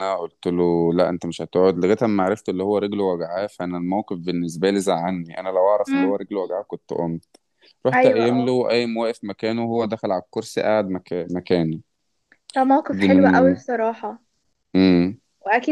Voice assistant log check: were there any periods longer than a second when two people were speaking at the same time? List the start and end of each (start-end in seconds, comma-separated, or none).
none